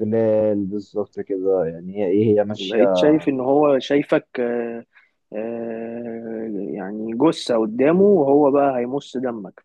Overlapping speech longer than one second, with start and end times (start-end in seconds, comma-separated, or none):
none